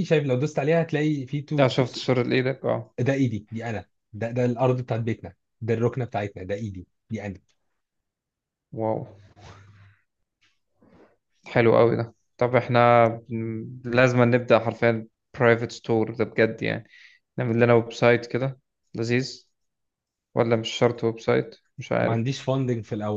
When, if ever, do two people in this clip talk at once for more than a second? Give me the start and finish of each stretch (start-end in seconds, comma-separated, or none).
none